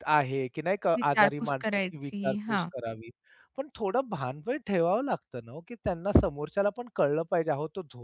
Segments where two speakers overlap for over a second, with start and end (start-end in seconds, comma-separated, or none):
1.0-2.7